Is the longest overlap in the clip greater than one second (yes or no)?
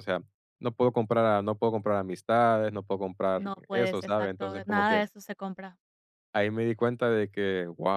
yes